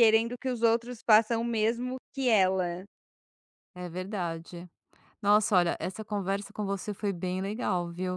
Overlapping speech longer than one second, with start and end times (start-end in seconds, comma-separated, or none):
none